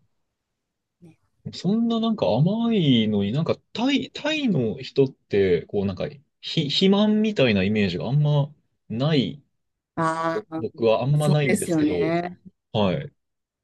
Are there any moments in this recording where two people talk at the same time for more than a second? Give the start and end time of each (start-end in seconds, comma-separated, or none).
10.3-12.1